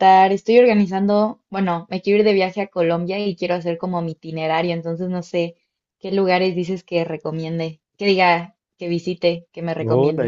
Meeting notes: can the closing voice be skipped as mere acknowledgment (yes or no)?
no